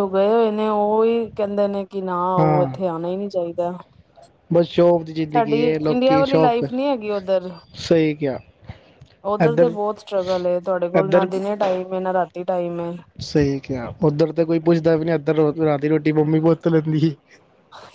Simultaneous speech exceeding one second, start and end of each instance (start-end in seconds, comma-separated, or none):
5.3-6.6